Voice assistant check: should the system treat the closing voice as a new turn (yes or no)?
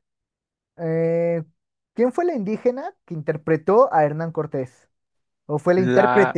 no